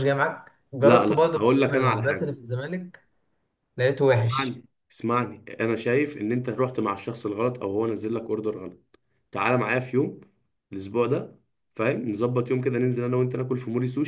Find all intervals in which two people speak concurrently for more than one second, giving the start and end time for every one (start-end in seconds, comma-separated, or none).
0.8-2.4